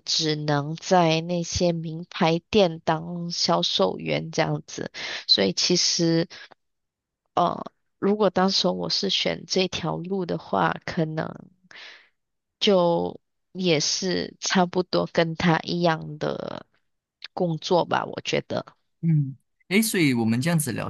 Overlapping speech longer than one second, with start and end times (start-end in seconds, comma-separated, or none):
none